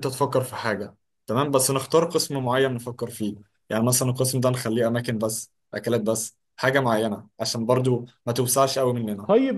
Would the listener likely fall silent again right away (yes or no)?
no